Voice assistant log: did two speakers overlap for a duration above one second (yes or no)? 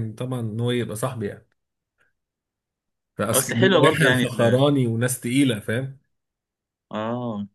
yes